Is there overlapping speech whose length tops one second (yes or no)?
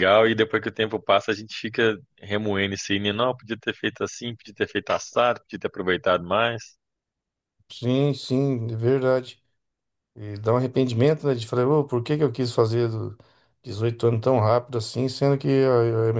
no